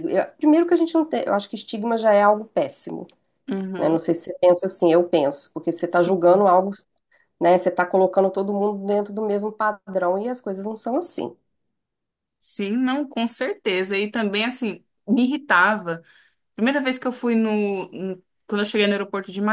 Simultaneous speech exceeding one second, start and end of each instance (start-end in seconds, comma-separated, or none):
none